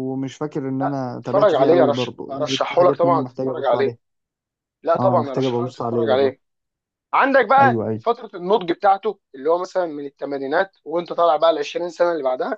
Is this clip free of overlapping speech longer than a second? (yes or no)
no